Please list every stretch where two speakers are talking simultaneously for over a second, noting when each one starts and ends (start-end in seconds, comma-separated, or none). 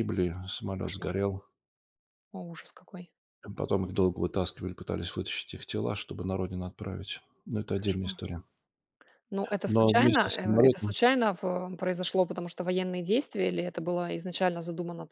9.7-10.9